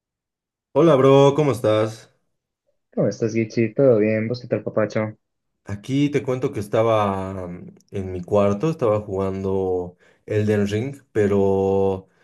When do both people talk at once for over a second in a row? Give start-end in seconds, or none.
none